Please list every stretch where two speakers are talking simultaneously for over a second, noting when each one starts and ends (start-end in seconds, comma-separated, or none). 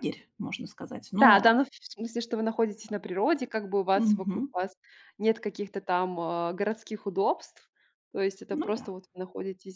none